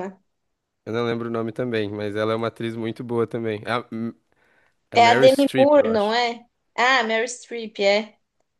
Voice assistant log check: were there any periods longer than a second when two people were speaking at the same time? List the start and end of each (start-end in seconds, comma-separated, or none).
4.9-6.1